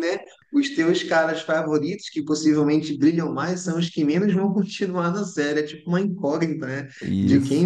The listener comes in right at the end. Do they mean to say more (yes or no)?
no